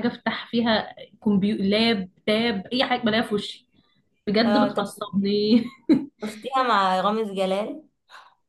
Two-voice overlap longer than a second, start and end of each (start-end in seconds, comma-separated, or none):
none